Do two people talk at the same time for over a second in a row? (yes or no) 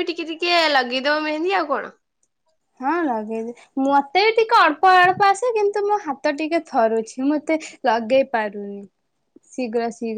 no